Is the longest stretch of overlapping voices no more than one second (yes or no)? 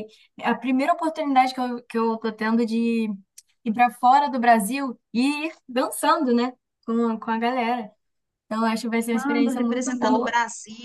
no